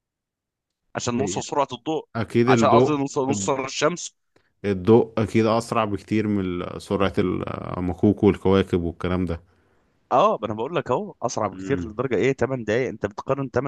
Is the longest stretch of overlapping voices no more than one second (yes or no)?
yes